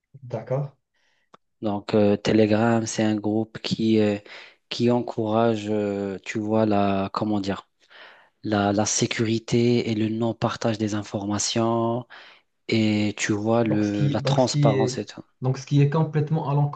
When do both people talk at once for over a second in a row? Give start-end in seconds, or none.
13.6-15.0